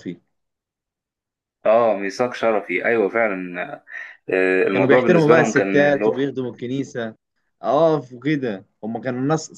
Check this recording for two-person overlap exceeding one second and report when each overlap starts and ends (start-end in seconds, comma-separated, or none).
4.7-6.1